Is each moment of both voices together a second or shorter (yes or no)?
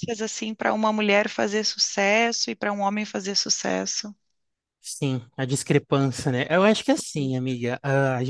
yes